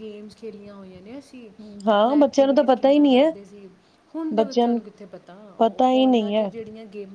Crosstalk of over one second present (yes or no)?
yes